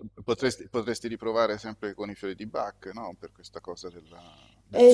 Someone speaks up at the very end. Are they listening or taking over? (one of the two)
taking over